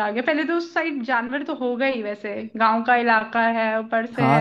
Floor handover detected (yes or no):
yes